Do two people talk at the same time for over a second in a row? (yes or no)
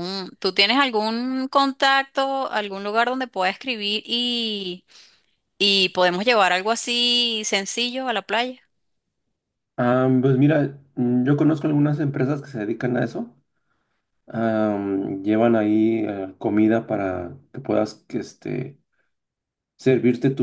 no